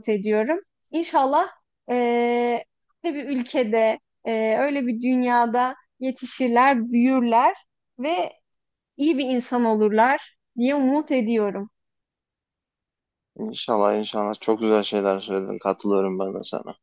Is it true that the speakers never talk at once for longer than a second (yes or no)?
yes